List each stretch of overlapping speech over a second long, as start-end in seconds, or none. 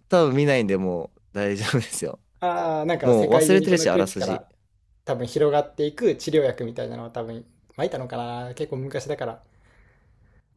3.0-4.4